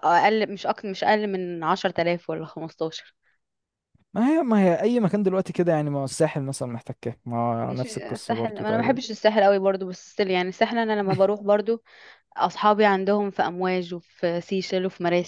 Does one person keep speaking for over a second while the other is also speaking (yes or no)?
yes